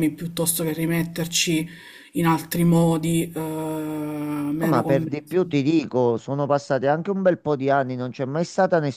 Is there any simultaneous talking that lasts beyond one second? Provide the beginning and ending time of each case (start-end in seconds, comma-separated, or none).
none